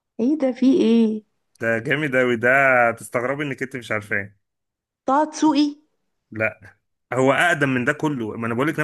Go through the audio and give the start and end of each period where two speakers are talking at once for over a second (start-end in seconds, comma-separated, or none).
none